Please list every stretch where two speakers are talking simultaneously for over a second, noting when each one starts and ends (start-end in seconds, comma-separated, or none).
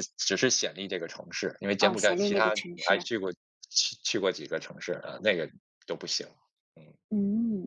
1.8-3.1